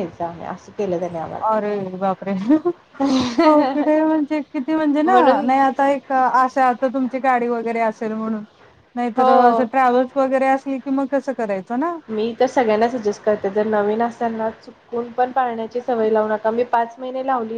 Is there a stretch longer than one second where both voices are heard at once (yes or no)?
no